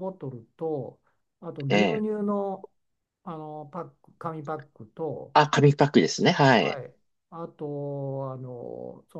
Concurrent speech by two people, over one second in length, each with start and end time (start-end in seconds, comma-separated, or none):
none